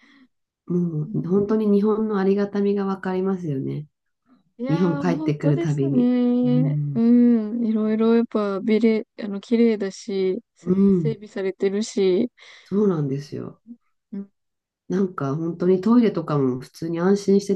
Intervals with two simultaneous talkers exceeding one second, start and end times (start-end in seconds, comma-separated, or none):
4.7-7.0